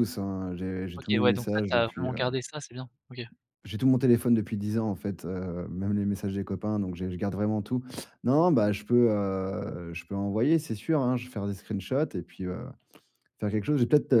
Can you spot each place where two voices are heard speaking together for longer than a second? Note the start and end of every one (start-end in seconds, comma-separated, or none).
1.0-2.2